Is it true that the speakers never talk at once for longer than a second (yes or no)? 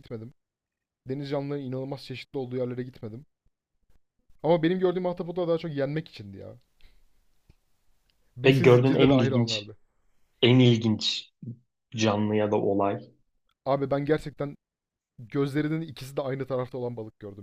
no